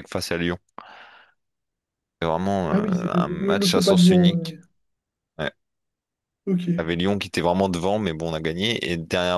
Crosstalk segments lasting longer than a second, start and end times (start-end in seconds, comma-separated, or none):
2.7-4.6